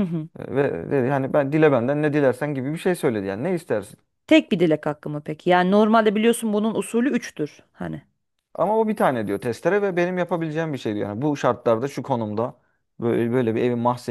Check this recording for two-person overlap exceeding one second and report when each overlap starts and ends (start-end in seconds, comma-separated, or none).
none